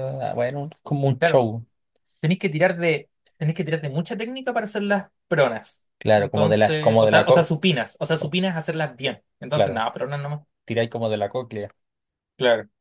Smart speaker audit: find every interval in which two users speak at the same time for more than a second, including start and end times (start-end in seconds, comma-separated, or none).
6.0-7.5